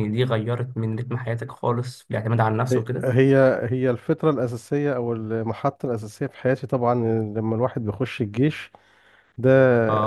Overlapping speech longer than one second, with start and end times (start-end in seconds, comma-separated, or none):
none